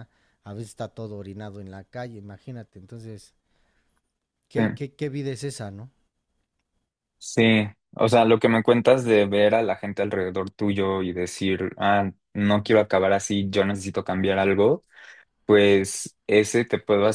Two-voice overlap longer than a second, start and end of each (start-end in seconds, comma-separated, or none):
none